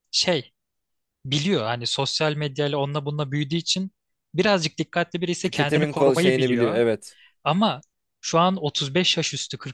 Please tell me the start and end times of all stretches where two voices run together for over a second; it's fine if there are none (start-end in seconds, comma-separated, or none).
5.4-6.8